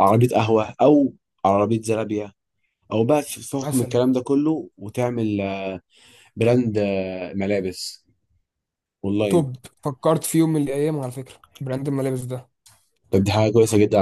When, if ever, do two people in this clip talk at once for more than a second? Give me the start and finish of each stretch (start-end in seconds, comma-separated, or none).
none